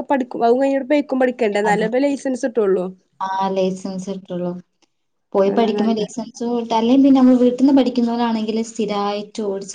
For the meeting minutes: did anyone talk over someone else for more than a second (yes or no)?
no